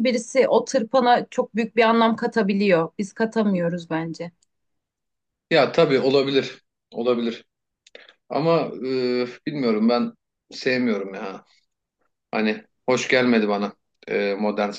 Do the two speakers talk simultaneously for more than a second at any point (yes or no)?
no